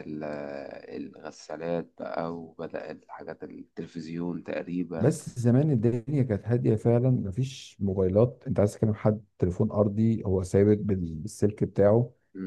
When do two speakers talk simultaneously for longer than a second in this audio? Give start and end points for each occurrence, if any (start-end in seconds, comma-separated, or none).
none